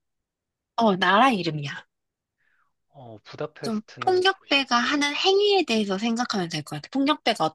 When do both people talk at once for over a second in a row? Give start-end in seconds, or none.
3.6-5.0